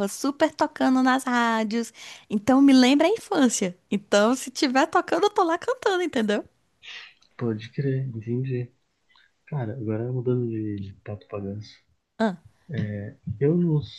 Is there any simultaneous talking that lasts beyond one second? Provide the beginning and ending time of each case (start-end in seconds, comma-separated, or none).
none